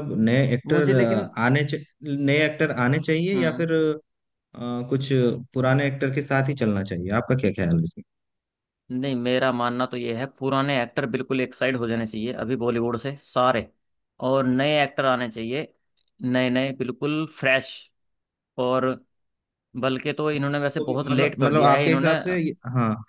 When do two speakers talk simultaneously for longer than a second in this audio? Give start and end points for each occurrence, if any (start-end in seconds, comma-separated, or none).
20.3-22.2